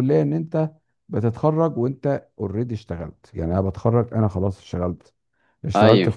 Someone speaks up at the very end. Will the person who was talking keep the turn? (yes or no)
yes